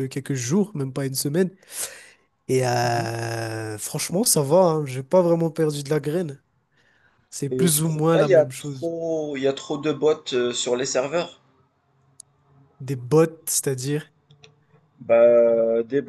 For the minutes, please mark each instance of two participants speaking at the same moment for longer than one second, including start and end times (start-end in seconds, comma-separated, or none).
7.5-8.9